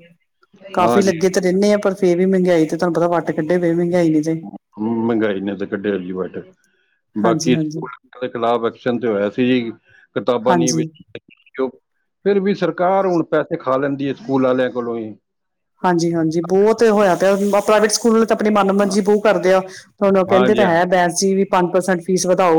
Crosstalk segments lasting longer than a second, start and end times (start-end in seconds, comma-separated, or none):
none